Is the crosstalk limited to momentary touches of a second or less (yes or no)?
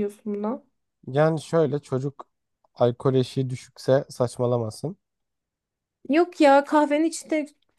yes